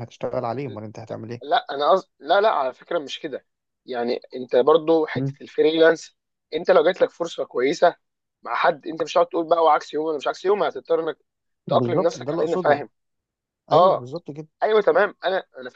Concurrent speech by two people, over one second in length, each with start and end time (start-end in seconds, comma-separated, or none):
11.7-12.9